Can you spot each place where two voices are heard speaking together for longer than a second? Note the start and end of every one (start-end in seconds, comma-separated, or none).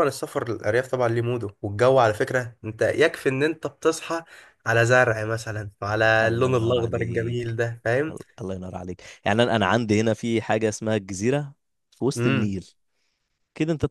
6.2-7.5